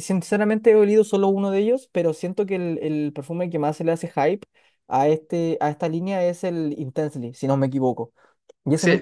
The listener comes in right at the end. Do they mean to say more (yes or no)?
yes